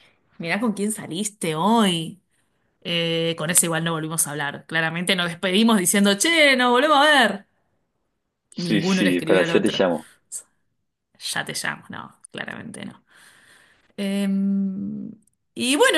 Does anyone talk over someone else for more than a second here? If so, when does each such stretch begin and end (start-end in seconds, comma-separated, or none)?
8.6-9.8